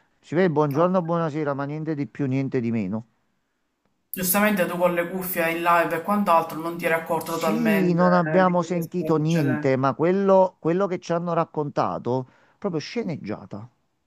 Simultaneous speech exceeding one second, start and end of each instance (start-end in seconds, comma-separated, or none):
7.2-9.7